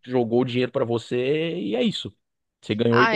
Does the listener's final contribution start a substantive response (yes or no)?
yes